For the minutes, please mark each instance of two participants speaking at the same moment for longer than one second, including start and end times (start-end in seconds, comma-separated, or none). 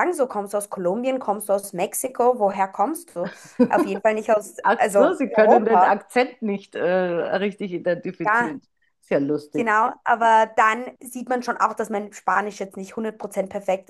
4.6-6.0